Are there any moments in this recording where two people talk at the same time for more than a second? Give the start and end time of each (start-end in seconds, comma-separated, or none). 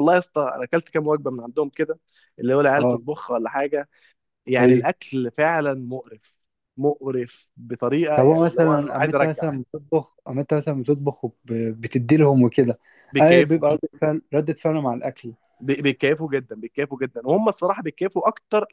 8.2-9.5